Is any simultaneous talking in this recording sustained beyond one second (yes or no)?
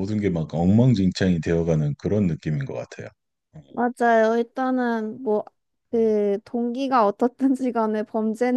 no